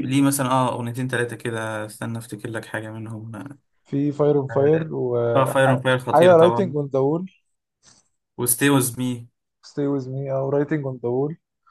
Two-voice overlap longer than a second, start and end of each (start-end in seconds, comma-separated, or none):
5.3-6.7